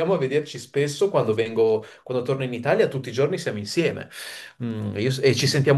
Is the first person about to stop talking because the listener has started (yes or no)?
no